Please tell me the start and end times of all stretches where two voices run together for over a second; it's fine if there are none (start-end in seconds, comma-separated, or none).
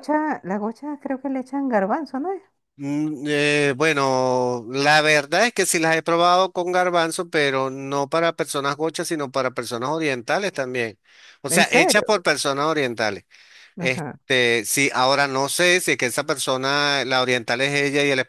none